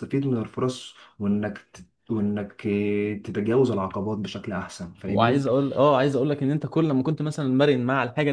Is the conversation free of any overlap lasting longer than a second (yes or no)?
yes